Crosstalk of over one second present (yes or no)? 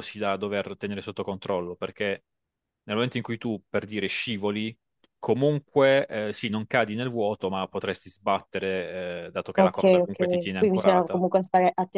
yes